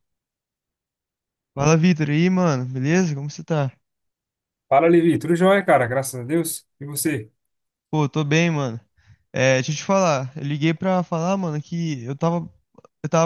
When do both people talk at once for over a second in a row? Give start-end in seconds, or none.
none